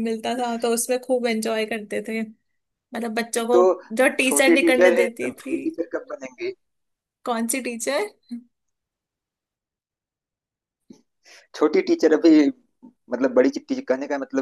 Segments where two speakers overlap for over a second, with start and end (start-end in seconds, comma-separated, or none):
4.2-5.6